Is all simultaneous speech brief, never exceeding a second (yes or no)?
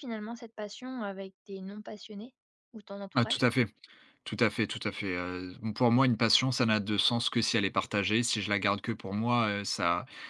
yes